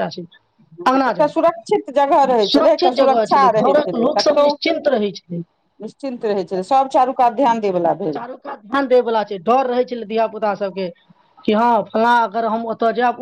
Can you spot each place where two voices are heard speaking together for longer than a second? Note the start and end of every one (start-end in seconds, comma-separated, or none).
2.5-4.5